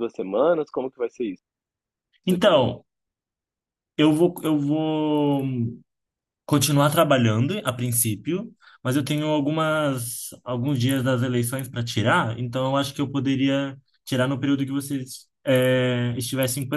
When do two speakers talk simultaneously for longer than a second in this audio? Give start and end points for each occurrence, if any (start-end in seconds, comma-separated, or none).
none